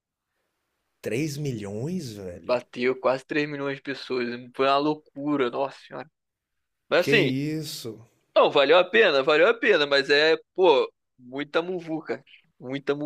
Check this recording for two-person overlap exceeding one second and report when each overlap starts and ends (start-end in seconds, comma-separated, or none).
none